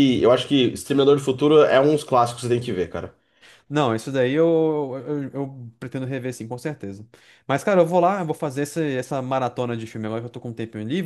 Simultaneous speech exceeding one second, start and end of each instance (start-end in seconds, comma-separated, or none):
none